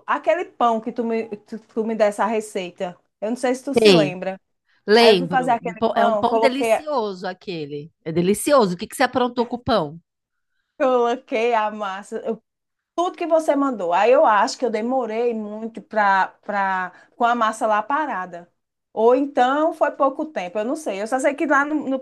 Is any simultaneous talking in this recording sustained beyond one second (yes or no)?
yes